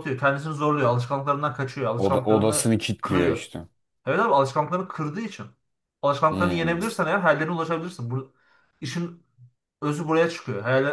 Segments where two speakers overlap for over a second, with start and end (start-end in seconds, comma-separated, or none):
2.0-3.5